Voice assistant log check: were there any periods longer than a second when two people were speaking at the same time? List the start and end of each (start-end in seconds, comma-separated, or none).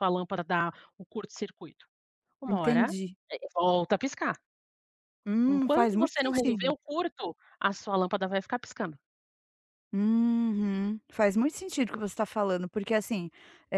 5.5-6.7